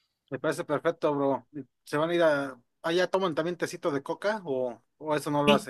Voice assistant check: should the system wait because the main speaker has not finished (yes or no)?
no